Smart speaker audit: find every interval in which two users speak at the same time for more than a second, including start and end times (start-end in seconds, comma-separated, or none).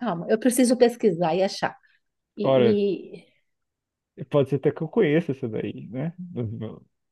none